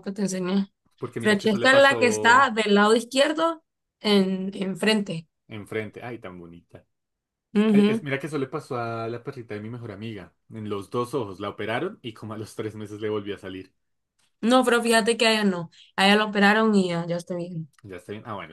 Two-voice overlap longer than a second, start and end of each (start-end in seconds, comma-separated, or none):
1.2-2.5